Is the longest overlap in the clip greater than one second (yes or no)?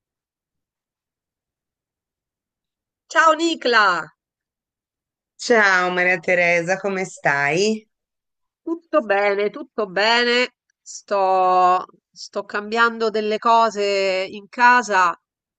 no